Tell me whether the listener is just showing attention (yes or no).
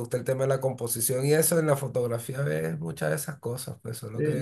no